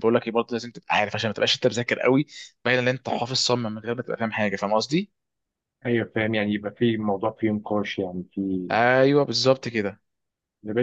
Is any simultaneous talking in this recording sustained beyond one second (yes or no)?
no